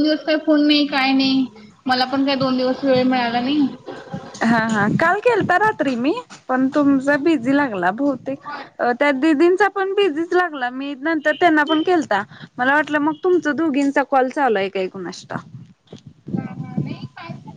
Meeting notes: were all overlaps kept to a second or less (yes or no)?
yes